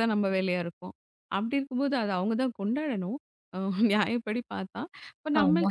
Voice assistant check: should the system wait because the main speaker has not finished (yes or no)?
yes